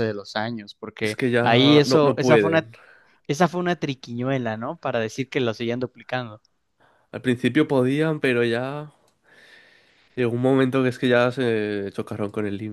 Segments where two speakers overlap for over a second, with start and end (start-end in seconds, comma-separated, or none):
1.0-2.7